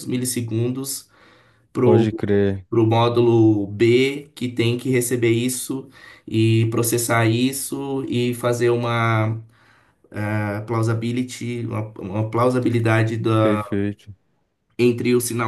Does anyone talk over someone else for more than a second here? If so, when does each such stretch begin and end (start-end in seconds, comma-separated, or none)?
none